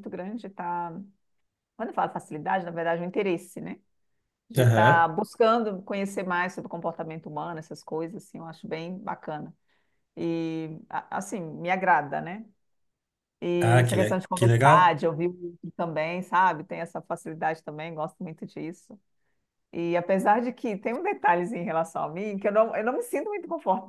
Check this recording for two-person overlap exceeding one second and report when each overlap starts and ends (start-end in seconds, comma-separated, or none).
13.6-15.0